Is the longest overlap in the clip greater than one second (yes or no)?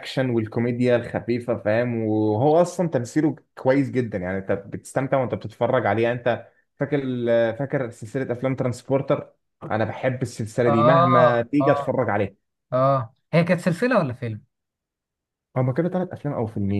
yes